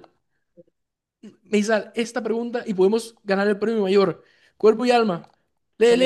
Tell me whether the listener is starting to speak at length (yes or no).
yes